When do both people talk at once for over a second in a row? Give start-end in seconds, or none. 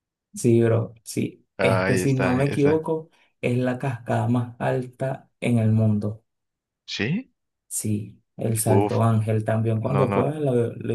1.6-2.9